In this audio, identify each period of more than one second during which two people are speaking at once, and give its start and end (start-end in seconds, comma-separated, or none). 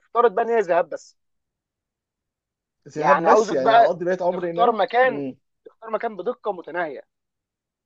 3.0-5.2